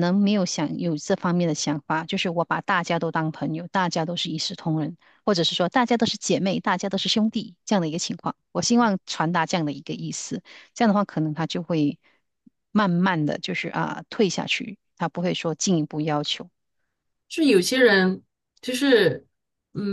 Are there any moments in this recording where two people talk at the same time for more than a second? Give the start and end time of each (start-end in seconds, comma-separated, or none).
none